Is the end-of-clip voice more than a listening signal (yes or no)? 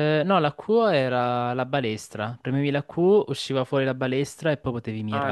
yes